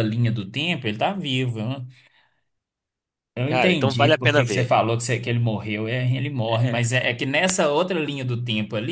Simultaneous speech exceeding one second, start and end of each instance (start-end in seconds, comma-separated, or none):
3.5-4.7